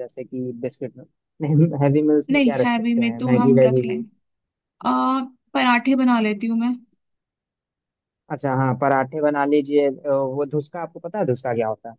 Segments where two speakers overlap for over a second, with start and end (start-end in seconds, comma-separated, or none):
2.3-4.0